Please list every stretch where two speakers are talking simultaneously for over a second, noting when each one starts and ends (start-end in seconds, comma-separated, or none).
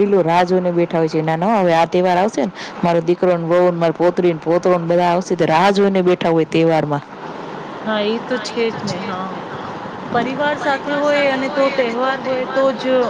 none